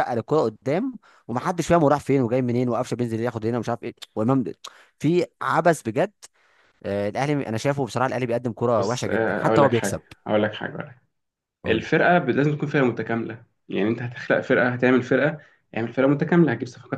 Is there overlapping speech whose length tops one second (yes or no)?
yes